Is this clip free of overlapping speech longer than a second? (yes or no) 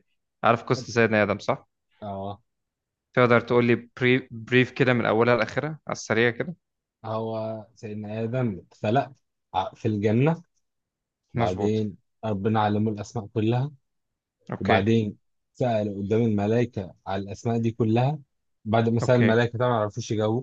yes